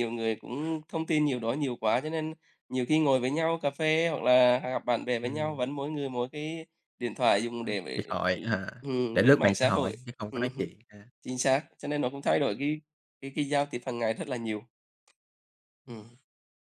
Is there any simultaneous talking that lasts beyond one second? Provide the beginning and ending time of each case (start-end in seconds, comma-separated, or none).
9.1-10.7